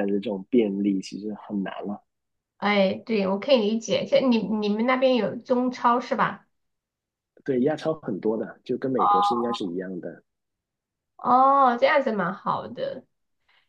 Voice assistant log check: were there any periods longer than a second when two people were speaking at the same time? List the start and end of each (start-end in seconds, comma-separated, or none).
none